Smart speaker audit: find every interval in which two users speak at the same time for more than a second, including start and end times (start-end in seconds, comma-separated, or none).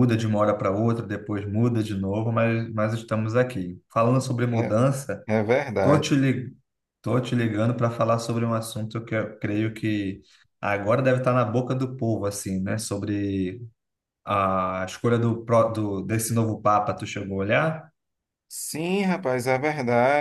none